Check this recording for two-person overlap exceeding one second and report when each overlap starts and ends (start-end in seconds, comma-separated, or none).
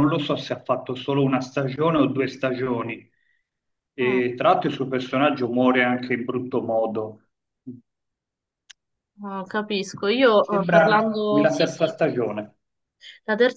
10.4-12.0